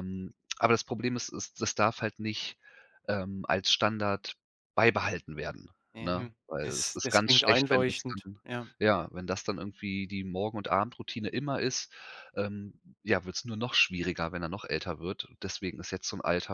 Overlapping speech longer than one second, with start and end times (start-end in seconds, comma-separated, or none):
6.0-8.4